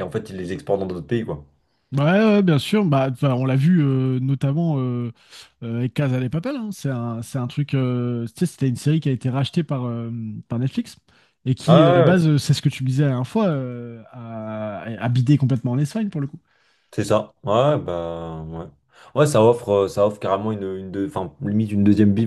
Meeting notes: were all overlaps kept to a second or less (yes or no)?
yes